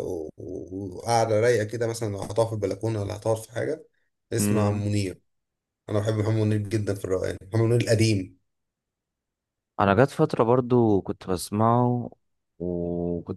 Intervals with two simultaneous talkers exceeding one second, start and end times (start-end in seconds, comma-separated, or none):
none